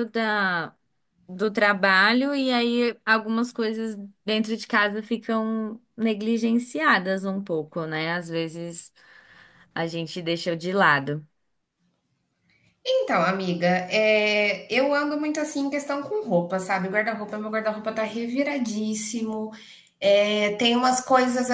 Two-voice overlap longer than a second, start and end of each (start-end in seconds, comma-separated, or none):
none